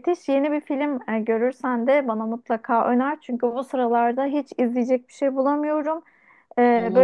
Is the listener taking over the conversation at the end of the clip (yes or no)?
no